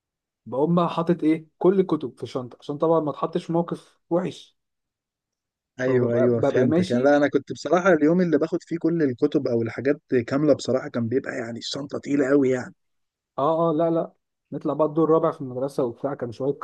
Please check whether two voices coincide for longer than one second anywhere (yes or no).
yes